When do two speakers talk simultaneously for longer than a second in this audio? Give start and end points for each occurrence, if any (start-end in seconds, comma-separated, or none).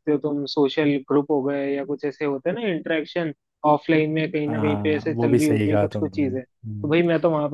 4.5-6.9